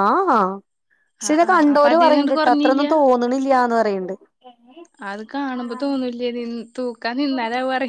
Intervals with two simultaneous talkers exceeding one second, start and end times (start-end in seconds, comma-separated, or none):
1.3-2.9